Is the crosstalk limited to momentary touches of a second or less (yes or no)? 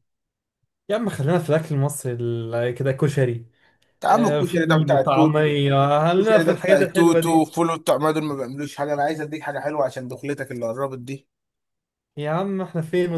no